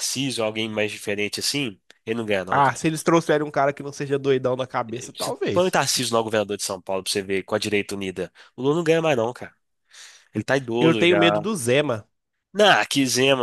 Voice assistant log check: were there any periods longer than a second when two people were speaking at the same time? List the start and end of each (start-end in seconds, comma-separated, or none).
none